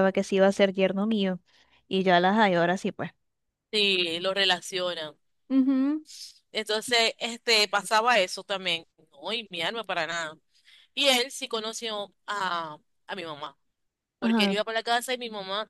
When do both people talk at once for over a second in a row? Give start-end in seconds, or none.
none